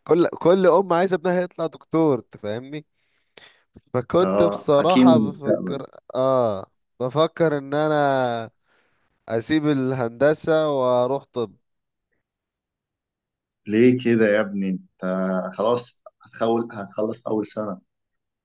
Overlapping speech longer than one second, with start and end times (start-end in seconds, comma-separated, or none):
4.2-5.8